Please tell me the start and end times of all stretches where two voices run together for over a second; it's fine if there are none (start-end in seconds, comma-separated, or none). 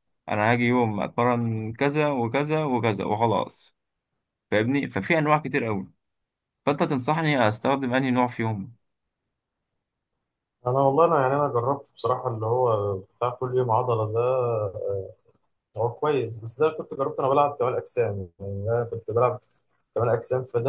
none